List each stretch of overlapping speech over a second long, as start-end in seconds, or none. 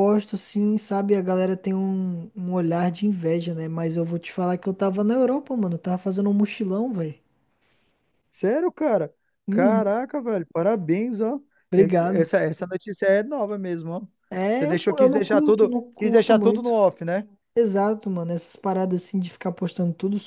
14.6-16.8